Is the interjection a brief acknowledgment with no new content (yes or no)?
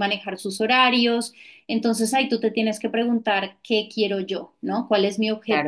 no